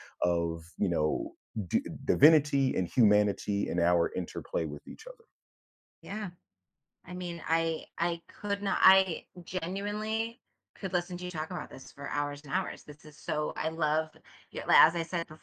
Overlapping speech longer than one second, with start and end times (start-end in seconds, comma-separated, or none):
none